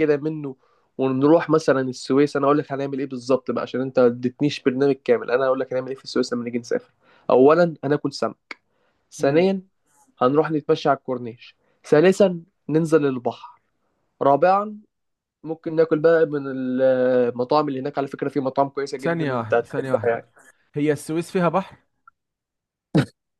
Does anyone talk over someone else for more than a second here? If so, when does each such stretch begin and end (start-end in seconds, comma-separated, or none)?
19.0-20.3